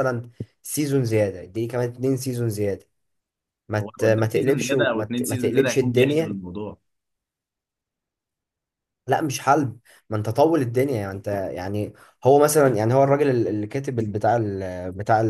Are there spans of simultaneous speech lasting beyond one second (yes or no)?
yes